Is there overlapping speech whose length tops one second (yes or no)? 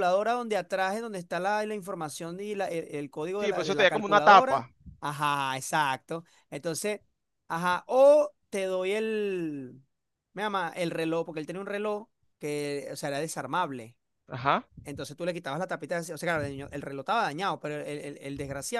yes